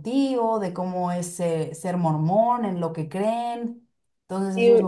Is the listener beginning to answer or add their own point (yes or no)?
yes